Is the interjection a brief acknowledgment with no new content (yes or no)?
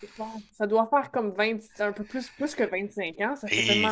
no